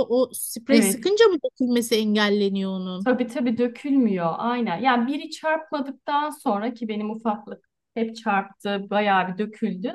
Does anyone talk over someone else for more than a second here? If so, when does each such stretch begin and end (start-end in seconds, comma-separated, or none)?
none